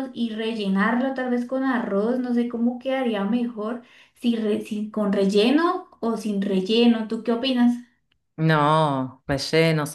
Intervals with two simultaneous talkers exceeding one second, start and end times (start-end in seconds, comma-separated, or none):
none